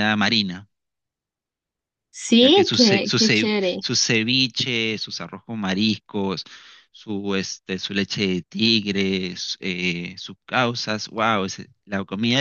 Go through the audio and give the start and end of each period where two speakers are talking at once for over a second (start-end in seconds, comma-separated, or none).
2.4-3.8